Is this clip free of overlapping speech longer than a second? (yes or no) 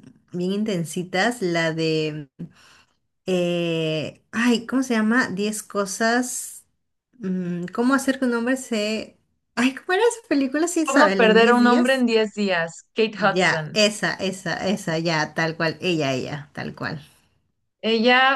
no